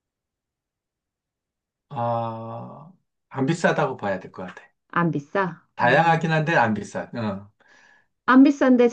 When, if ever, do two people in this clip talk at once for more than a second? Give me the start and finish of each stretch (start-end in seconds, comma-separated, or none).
none